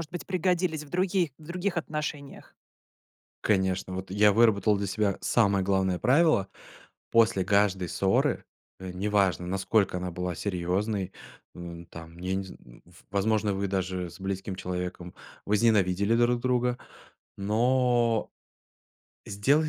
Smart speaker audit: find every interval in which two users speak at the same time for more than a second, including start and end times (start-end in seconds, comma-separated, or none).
none